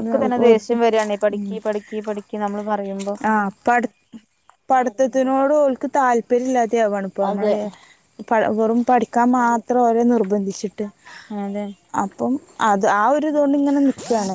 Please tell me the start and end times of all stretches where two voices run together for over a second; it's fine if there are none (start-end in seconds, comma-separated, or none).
none